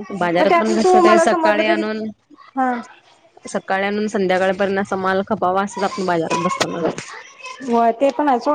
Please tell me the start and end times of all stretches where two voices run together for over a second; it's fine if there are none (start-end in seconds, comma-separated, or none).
none